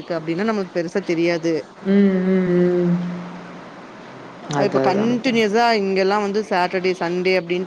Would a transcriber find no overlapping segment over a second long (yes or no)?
yes